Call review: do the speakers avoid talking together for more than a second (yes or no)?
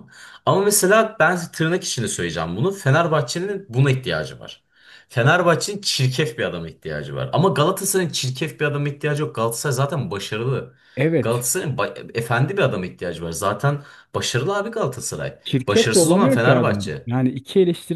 no